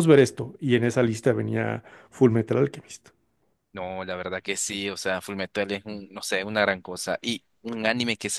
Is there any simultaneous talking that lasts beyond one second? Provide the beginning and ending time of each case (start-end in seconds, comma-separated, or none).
none